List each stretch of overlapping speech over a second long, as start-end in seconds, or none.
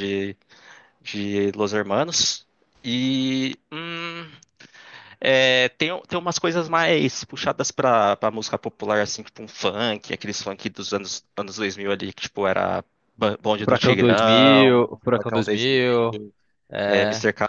13.6-16.2